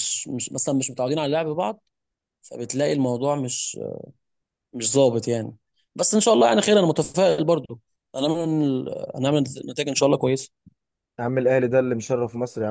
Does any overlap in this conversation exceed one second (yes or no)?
no